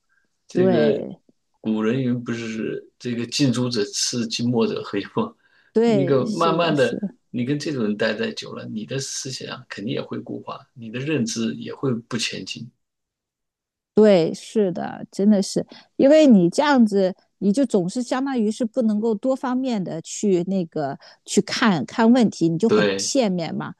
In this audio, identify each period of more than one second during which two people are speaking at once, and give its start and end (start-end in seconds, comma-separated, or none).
5.8-7.2